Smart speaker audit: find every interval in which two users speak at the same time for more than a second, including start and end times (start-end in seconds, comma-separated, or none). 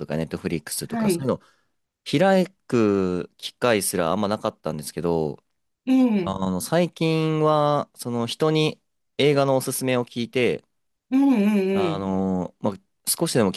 none